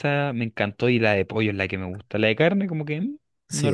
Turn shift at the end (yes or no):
yes